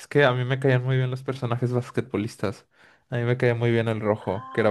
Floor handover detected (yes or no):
yes